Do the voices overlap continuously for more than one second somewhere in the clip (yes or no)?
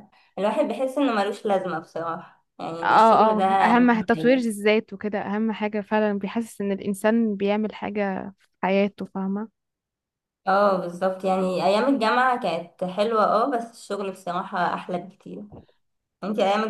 yes